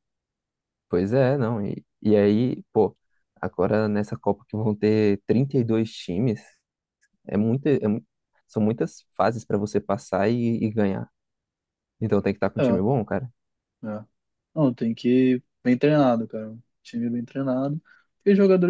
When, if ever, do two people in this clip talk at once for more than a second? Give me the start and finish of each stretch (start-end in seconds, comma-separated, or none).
none